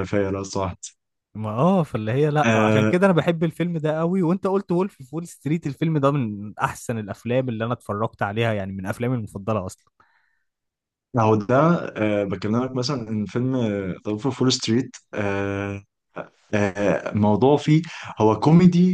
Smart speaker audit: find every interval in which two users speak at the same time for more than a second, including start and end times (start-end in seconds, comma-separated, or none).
none